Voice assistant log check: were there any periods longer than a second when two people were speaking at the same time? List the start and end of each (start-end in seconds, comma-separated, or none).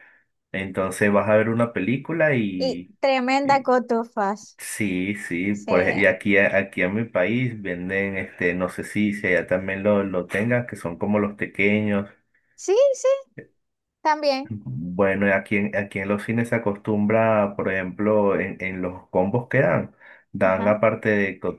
none